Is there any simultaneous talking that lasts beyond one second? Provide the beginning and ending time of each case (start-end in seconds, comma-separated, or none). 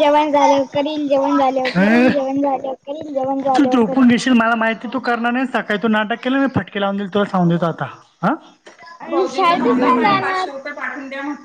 9.1-10.5